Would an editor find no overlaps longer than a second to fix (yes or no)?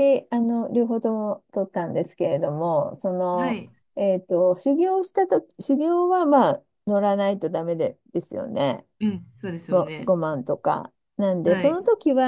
yes